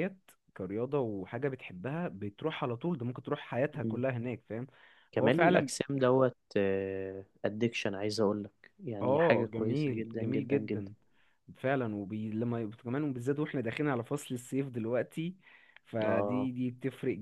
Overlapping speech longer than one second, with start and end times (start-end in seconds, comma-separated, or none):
9.0-10.9